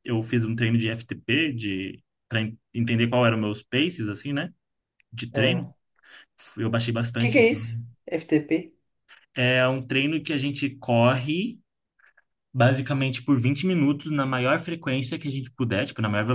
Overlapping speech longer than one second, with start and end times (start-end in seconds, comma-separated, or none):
none